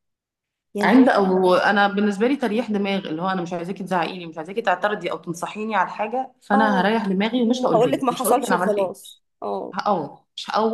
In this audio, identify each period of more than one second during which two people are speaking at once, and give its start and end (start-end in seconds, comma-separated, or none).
7.7-8.9